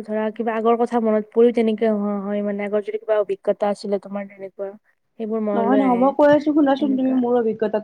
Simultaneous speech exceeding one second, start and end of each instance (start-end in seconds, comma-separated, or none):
none